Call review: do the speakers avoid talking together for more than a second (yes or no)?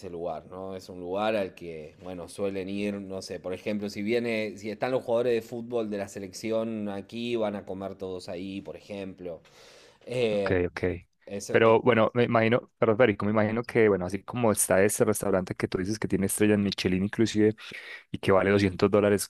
yes